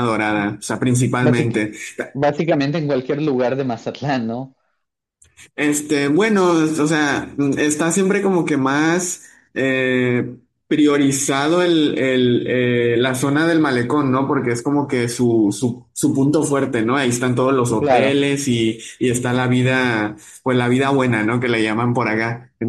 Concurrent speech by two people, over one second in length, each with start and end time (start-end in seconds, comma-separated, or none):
none